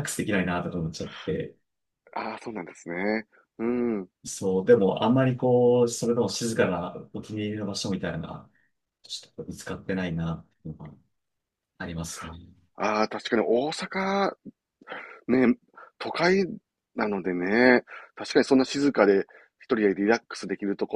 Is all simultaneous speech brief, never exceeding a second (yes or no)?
yes